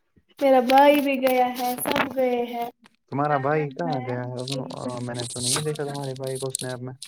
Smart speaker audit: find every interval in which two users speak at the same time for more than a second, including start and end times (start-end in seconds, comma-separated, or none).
3.3-6.1